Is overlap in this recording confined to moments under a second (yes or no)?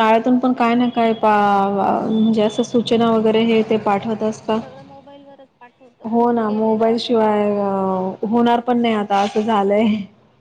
no